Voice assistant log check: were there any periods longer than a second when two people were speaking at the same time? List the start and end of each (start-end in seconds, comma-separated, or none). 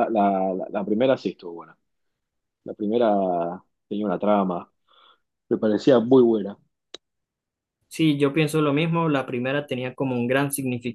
none